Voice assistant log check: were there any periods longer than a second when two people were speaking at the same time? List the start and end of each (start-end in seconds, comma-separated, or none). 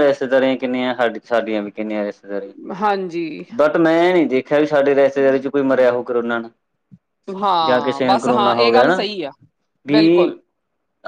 7.6-9.0